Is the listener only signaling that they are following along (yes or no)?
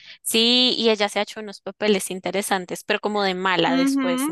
no